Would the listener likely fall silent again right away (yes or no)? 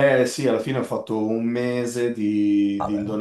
yes